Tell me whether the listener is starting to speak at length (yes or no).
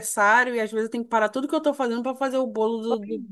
yes